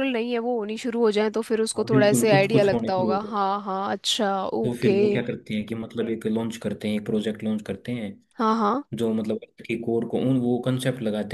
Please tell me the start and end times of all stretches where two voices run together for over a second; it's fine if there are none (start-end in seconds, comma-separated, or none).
1.8-3.4